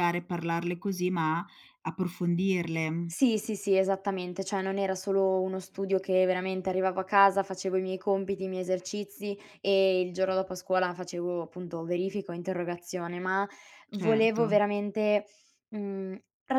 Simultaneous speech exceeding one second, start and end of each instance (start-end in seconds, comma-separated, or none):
none